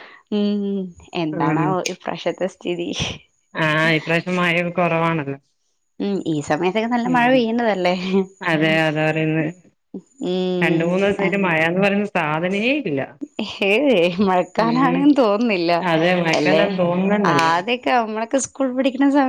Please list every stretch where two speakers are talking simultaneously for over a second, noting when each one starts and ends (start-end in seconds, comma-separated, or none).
none